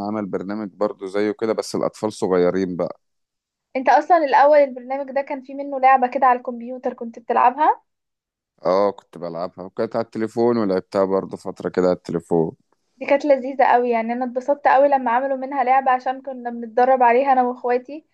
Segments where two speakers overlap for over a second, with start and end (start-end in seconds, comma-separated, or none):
none